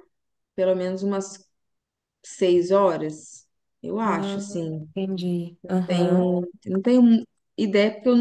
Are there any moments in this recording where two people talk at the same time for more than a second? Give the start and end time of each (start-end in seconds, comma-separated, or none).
none